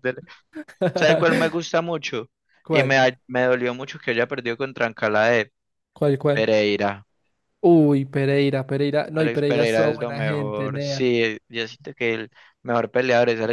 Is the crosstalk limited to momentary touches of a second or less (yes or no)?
no